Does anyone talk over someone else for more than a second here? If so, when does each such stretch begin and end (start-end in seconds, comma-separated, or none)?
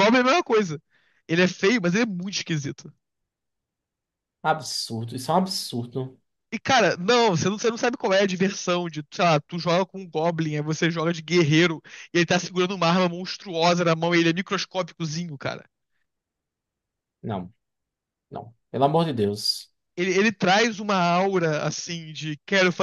none